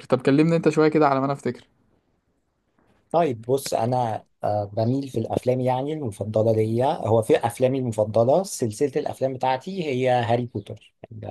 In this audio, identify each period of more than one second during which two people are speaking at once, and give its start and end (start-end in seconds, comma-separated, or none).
none